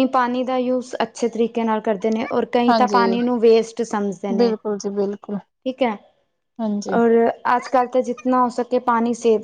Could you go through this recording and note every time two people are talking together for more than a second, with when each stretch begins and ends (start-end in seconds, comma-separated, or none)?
none